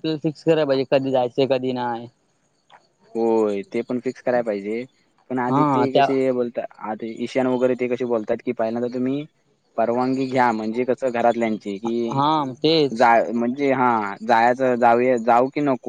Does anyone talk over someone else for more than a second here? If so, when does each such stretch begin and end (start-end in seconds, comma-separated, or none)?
none